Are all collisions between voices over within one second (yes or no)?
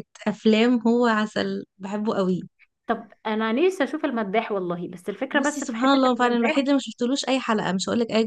no